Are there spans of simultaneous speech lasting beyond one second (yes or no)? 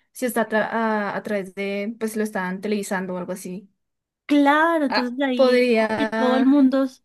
yes